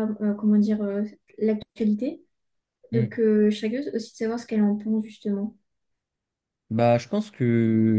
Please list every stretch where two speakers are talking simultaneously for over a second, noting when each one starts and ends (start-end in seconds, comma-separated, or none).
none